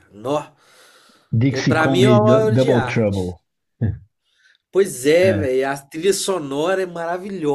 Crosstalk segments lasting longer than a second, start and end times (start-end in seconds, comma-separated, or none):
1.5-3.3